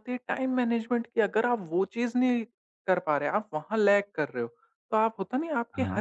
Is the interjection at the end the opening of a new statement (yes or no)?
no